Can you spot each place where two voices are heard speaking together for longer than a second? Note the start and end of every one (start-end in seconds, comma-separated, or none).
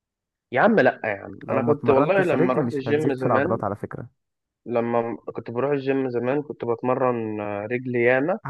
1.4-3.6